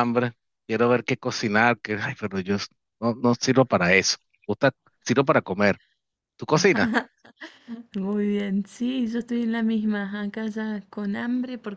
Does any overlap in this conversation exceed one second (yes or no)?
no